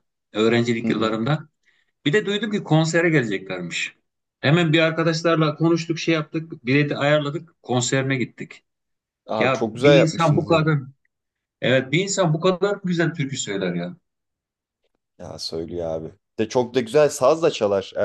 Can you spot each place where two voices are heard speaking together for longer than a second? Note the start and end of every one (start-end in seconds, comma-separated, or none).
9.4-10.6